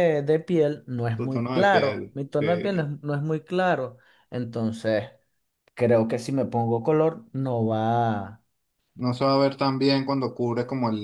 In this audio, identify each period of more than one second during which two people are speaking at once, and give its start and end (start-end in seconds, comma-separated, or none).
1.1-2.9